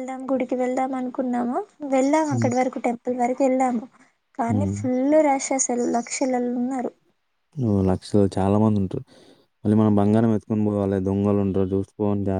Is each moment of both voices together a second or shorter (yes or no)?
yes